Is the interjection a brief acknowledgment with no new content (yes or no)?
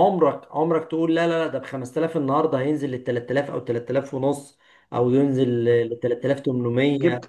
no